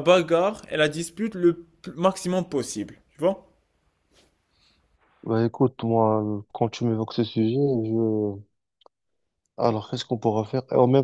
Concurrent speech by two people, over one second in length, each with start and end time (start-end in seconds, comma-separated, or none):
none